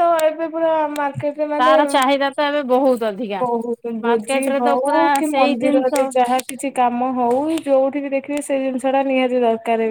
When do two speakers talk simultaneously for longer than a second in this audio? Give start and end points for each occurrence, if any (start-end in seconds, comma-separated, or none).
4.0-5.9